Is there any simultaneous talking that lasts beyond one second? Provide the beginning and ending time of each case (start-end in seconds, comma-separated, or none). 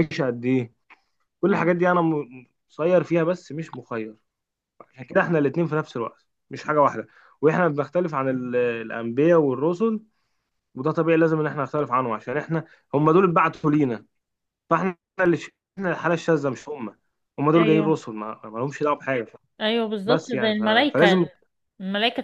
20.1-21.2